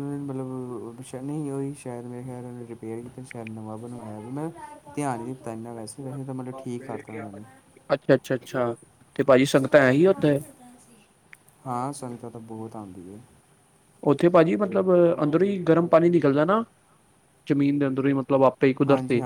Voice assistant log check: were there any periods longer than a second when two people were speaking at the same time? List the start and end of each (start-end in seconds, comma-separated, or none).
none